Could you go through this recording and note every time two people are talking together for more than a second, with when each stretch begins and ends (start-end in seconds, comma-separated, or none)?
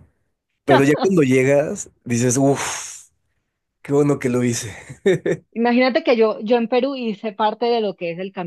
none